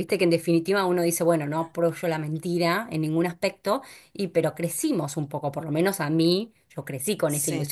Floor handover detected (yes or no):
no